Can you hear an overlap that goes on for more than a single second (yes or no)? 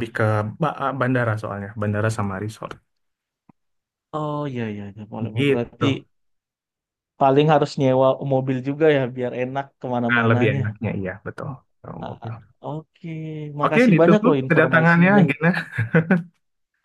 yes